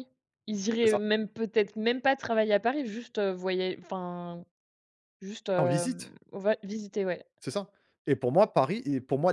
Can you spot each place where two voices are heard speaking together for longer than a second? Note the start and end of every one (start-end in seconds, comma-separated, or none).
none